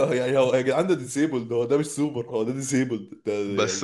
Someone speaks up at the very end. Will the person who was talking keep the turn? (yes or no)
no